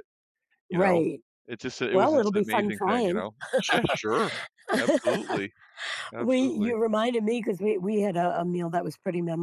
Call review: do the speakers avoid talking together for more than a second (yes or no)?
no